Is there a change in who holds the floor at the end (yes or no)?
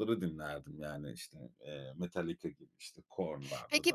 yes